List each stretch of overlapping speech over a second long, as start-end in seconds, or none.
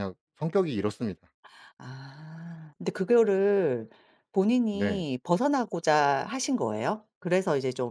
none